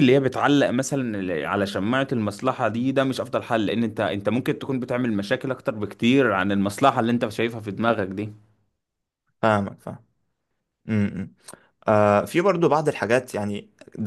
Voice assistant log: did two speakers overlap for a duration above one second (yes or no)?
no